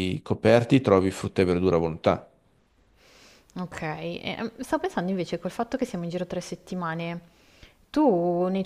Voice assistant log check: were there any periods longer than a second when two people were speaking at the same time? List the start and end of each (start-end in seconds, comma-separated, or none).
none